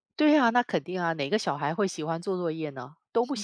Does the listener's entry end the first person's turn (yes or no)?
yes